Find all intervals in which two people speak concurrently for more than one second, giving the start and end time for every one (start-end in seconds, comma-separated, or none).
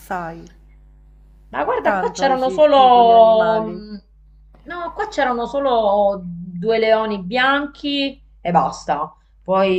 1.8-3.8